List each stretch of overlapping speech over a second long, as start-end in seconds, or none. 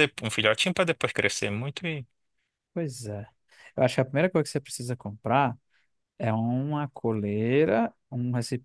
none